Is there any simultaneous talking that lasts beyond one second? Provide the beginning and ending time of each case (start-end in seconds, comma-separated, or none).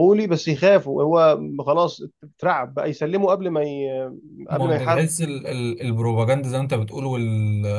none